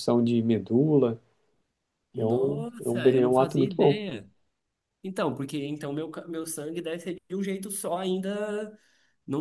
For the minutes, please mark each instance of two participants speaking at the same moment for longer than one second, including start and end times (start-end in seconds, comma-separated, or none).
2.2-4.0